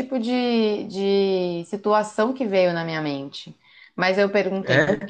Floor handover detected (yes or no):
no